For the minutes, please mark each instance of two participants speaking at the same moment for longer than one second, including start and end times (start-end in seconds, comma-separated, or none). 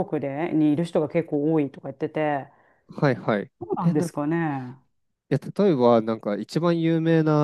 none